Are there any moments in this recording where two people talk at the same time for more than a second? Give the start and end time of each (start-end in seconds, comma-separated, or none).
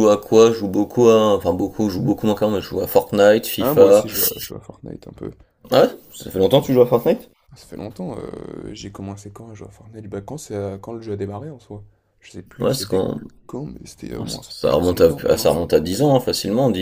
14.1-15.5